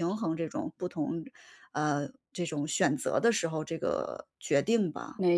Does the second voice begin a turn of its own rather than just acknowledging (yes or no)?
yes